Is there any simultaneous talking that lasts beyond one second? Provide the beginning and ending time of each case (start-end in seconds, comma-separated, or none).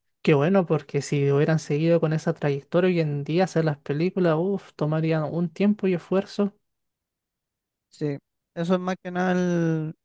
none